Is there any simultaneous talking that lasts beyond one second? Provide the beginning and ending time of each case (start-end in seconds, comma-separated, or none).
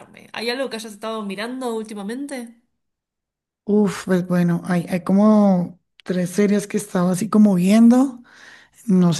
none